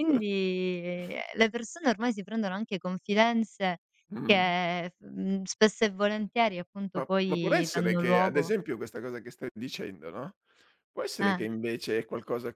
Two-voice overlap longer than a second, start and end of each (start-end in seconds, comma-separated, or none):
7.0-8.5